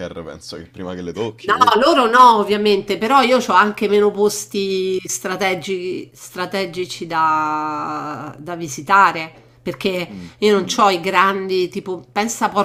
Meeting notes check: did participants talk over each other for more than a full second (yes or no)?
no